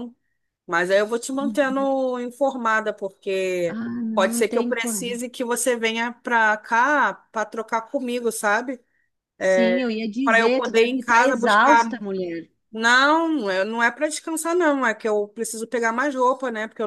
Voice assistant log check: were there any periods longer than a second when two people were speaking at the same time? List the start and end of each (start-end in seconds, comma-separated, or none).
3.7-5.2, 10.2-11.8